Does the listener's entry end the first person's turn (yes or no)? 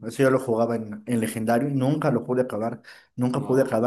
no